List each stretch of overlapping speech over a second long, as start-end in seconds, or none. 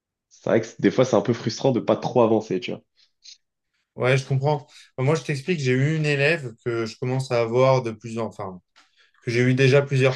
none